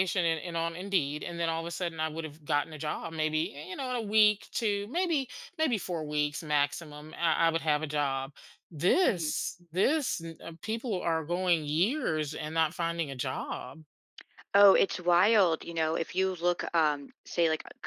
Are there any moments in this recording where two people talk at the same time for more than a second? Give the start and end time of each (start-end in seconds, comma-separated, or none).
none